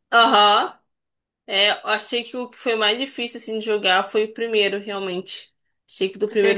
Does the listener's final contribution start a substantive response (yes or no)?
no